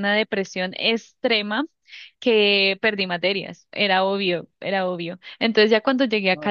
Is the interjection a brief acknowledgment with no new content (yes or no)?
yes